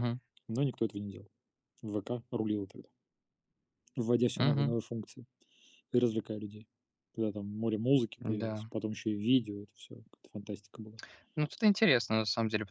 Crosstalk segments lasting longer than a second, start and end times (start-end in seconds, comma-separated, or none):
none